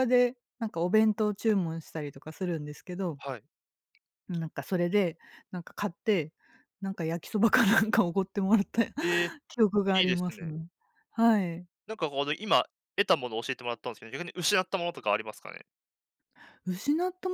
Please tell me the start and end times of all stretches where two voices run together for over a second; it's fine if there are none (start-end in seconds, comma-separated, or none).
none